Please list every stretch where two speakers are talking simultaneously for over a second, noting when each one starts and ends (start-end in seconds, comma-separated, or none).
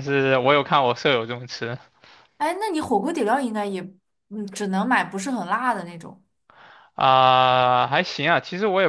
none